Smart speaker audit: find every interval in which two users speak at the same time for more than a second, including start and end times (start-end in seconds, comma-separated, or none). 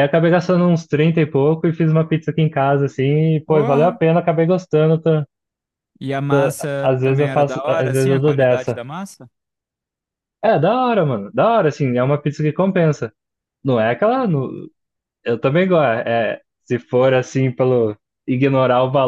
6.8-8.8